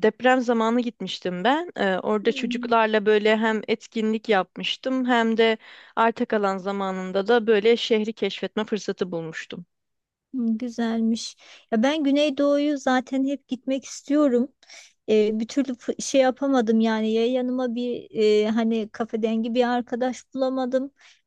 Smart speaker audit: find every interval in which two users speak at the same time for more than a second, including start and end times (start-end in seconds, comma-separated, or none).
none